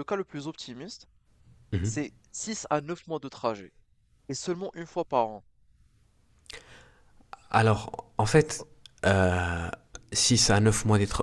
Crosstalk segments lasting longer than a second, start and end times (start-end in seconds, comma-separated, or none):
none